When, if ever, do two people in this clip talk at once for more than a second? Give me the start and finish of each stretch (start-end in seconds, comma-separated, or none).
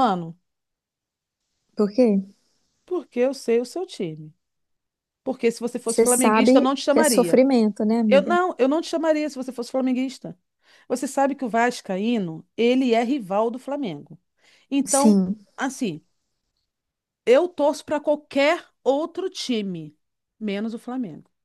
5.9-7.4